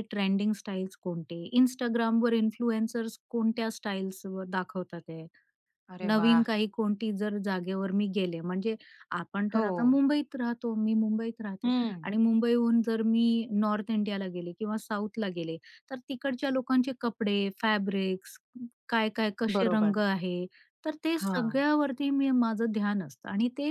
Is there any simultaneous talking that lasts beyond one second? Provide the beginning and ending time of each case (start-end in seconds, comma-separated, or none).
none